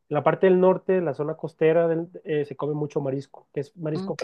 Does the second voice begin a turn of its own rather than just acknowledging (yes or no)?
no